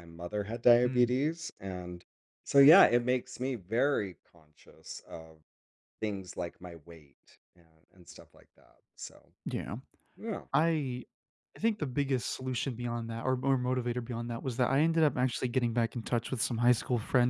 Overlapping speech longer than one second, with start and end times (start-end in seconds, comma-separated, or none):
none